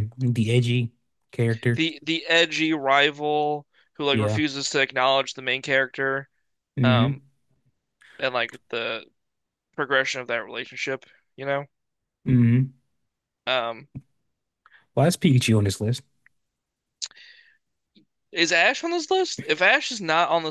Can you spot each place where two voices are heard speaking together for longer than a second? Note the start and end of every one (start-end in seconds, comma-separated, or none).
none